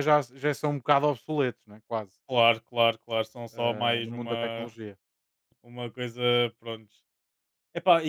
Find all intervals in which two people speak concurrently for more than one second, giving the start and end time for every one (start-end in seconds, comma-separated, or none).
3.5-4.7